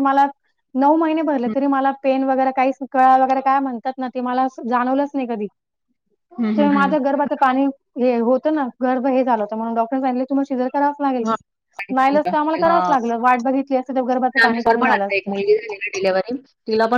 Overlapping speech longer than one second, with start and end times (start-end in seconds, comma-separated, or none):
14.4-16.0